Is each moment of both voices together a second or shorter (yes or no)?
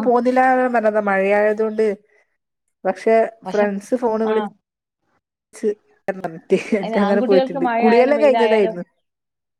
no